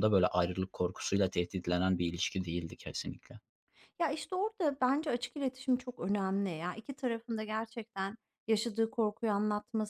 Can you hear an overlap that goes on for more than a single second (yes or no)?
no